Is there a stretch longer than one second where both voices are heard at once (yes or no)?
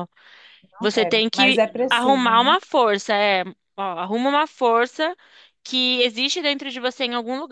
yes